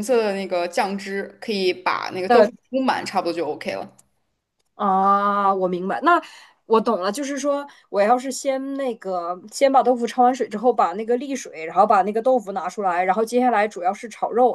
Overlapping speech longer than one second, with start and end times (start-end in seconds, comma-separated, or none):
none